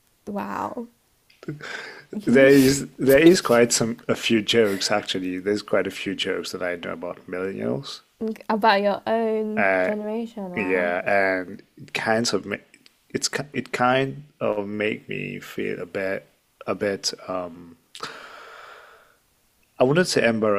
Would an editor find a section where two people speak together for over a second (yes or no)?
no